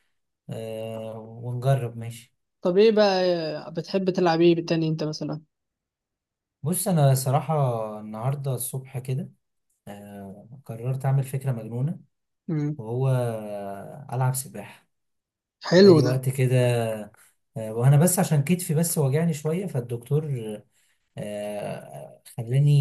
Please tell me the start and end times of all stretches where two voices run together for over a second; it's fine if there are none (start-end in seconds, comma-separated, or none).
none